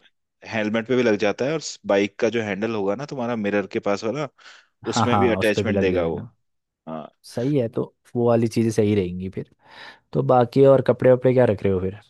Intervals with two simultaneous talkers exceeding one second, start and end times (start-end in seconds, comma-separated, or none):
4.9-6.2